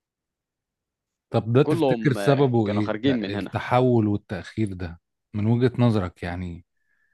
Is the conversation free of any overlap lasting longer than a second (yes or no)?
no